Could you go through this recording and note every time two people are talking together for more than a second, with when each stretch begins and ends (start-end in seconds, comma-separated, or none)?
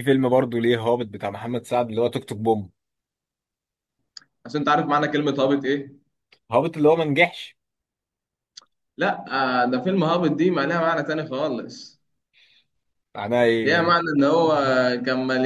none